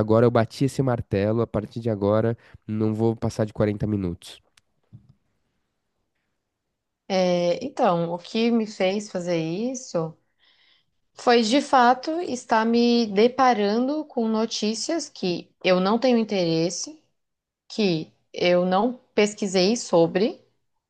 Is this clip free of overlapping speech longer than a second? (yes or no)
yes